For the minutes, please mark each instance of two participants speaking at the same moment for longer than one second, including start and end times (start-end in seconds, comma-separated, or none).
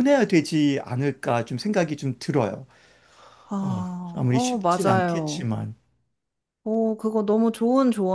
3.6-5.5